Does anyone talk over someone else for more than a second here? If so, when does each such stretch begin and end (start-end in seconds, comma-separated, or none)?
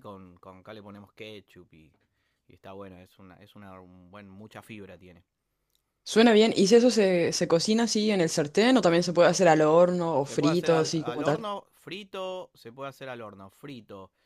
10.2-11.4